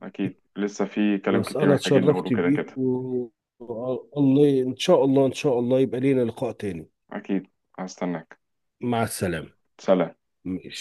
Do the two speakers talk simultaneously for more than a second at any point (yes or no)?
yes